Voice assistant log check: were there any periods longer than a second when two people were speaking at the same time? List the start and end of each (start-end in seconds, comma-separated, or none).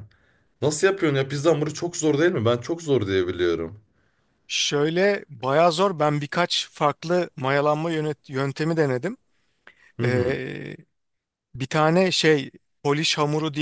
none